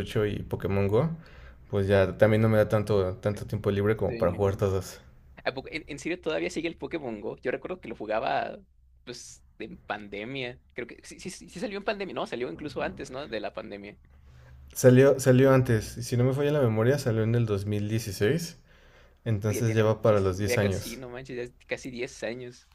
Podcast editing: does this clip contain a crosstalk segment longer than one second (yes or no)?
yes